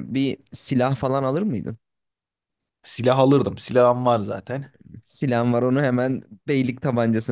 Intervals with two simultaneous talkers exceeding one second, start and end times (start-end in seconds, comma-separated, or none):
none